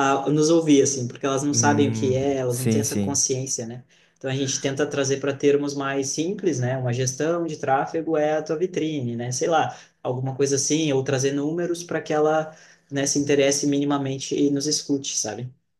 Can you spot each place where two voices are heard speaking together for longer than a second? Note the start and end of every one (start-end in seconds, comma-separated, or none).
1.5-3.2